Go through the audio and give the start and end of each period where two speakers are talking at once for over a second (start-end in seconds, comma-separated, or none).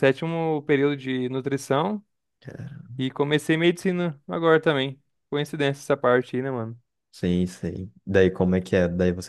none